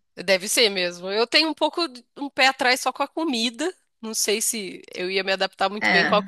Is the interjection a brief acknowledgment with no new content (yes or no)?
yes